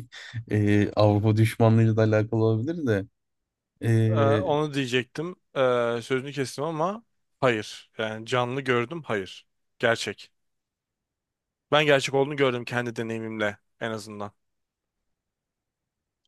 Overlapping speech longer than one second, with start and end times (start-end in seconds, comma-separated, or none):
none